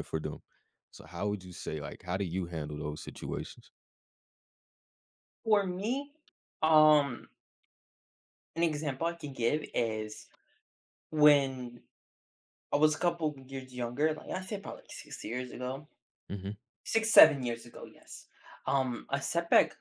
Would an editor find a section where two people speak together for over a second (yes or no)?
no